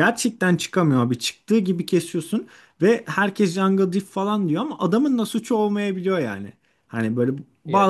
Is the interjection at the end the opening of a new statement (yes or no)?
no